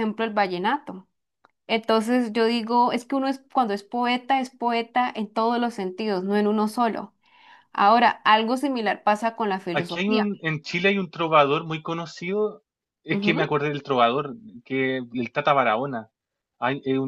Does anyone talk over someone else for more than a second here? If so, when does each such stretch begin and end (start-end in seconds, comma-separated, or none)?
none